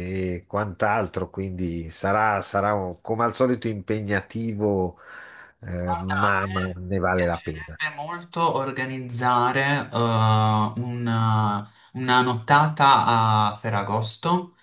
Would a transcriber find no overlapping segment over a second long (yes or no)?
no